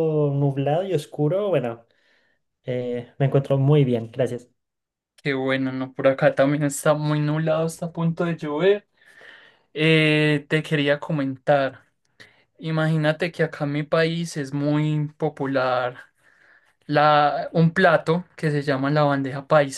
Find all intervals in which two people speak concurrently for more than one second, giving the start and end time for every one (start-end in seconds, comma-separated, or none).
none